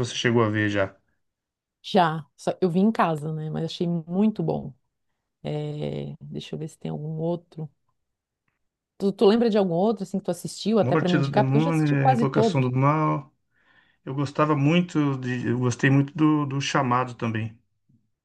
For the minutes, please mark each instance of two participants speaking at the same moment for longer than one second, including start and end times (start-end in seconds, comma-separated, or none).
10.8-12.7